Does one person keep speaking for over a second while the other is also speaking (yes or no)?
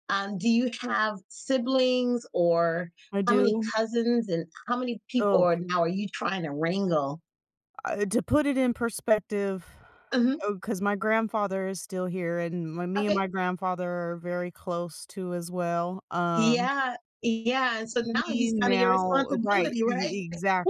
yes